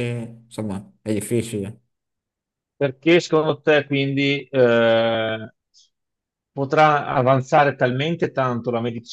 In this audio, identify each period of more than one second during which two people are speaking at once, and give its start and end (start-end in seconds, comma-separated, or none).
none